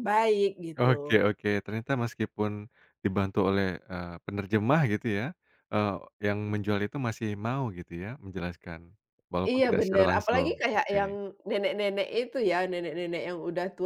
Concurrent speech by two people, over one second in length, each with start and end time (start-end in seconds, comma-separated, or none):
9.4-11.1